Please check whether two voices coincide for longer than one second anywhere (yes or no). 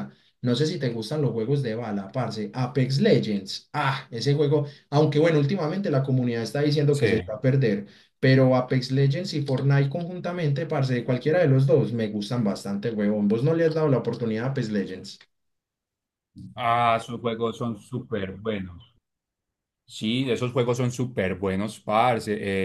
no